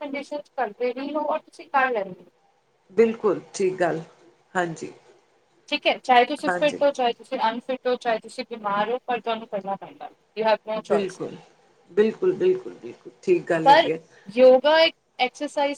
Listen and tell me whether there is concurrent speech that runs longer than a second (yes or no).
no